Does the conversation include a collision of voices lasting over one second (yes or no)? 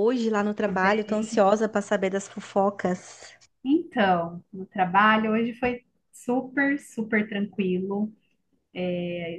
no